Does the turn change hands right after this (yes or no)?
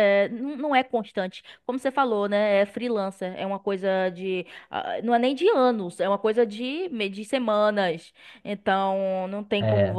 no